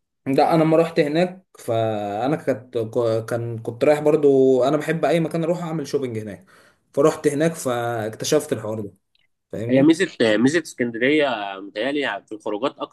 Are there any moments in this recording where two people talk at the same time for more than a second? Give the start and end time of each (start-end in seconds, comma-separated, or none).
none